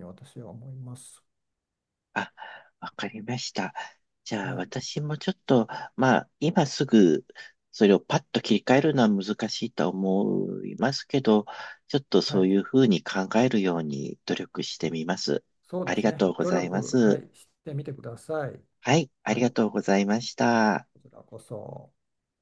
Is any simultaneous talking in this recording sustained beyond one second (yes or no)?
yes